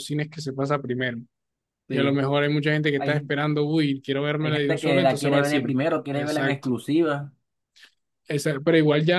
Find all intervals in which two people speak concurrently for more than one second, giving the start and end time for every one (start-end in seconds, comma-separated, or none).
4.4-6.7